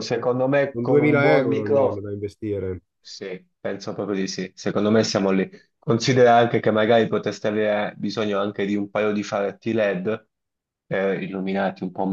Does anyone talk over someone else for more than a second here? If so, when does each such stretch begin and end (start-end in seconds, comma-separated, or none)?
0.7-2.0